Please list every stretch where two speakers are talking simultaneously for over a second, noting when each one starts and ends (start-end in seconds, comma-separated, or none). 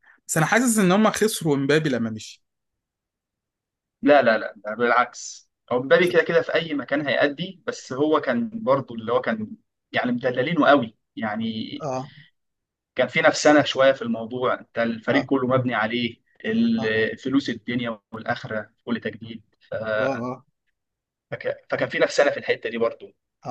none